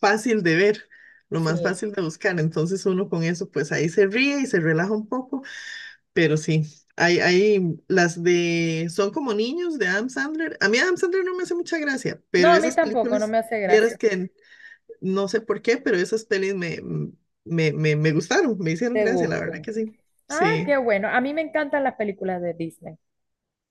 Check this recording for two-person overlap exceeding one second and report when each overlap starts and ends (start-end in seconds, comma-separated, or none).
12.4-14.0